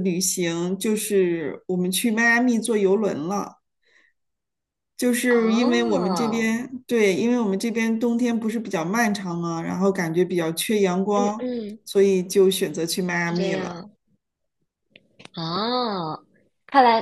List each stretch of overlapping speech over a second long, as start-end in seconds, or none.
5.3-6.5